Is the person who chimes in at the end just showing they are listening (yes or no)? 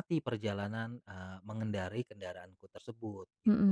no